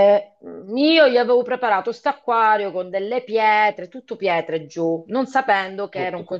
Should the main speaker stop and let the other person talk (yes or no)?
no